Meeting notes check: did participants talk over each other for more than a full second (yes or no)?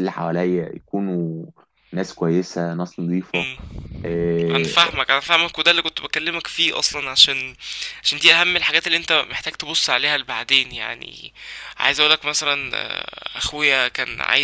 no